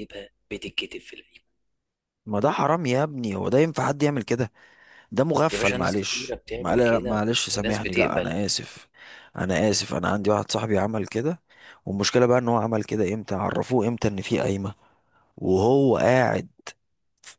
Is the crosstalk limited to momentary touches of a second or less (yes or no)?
no